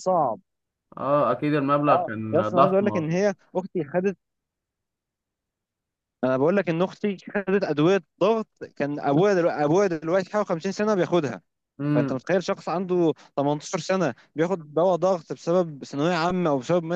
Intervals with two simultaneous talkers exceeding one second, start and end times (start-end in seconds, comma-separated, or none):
1.9-3.2